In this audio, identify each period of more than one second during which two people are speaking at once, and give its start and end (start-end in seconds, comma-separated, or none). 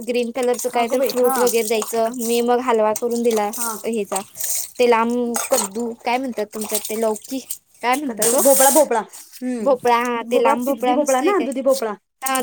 9.6-11.5